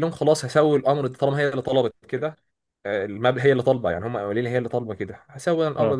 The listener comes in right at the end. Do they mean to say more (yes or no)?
no